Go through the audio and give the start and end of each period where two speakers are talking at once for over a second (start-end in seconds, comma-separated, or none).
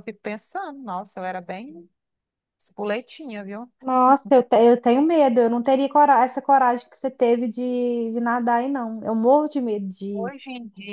none